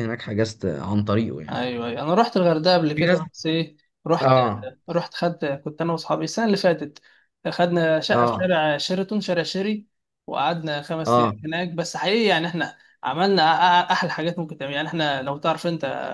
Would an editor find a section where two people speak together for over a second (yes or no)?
no